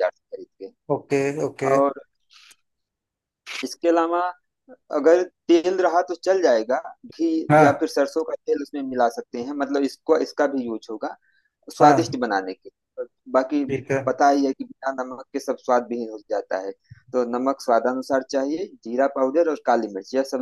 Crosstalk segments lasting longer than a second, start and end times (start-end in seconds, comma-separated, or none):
none